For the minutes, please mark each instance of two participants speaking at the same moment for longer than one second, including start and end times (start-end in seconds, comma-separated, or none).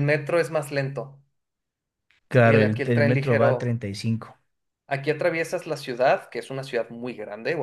2.4-3.8